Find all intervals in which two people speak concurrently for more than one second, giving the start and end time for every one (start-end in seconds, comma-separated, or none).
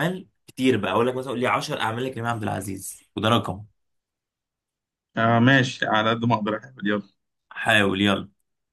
none